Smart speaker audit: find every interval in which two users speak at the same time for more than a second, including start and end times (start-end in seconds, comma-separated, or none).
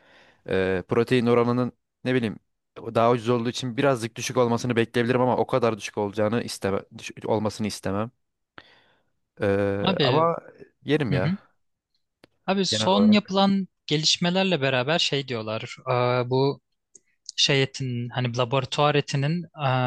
none